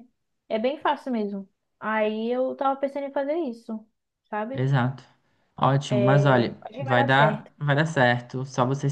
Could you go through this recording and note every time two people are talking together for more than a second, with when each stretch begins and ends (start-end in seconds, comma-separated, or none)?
5.9-7.5